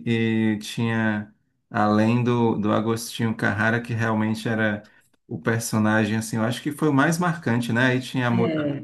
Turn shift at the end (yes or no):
no